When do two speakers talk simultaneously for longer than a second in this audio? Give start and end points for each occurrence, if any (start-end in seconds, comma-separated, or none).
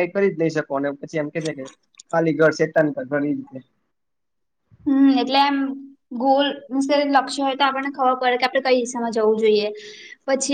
none